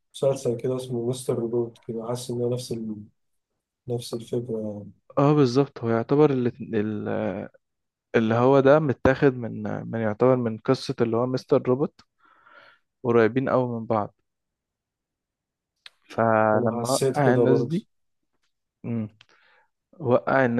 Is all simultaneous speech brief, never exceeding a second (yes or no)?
no